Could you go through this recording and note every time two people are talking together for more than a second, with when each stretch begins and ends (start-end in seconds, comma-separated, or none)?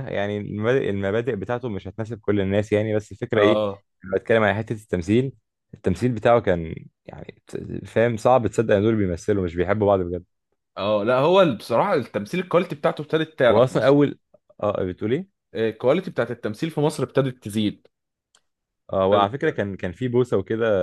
none